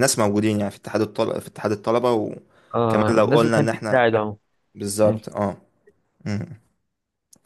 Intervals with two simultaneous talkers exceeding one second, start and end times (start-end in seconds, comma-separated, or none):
2.8-4.0